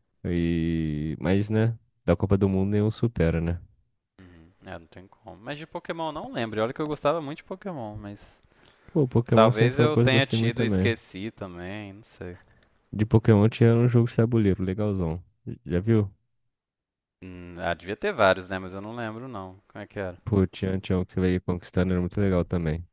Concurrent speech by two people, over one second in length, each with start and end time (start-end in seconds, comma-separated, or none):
9.3-11.0